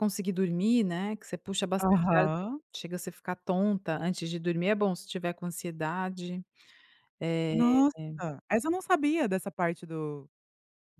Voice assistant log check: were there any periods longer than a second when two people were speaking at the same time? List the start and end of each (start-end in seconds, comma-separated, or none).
none